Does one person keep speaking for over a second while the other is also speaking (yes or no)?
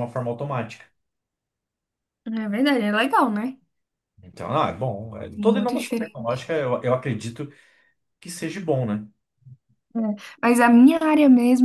yes